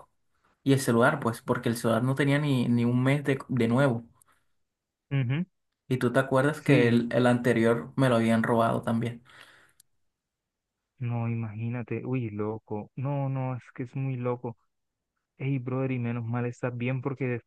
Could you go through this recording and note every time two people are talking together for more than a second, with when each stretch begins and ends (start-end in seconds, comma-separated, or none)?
none